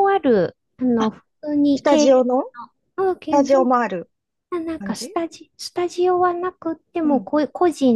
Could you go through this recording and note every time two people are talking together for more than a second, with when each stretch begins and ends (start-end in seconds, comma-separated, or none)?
none